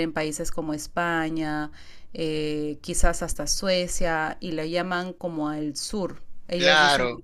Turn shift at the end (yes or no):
yes